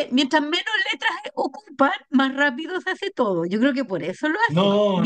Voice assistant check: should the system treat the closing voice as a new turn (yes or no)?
yes